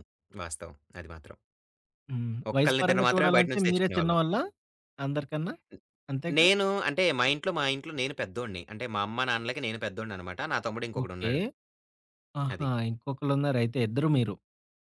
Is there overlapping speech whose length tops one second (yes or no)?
yes